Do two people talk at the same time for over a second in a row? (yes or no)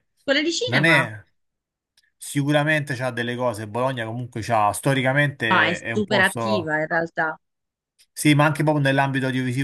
yes